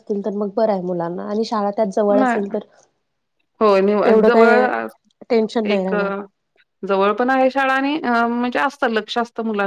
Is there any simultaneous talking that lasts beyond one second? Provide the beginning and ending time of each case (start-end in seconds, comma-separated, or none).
none